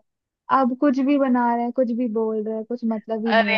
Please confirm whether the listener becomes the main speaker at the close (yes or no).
yes